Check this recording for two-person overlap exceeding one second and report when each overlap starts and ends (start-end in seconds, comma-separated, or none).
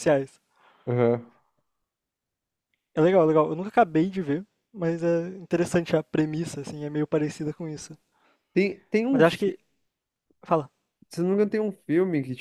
none